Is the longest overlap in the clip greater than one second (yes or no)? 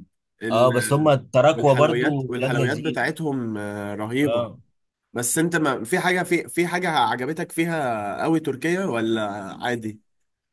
yes